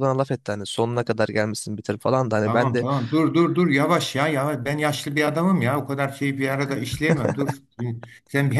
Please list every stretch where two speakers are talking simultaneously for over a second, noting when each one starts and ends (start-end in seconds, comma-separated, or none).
none